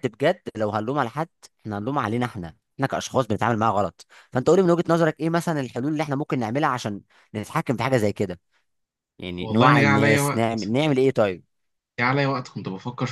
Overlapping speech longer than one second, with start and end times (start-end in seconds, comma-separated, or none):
9.4-10.7